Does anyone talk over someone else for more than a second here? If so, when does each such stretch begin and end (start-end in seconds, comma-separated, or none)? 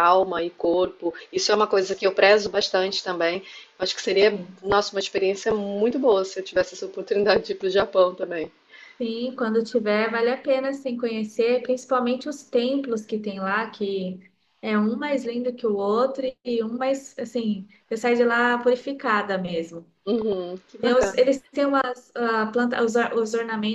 none